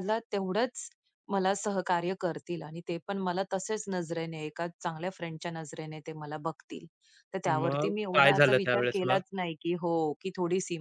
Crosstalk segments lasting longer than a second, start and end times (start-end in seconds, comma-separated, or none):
7.5-9.2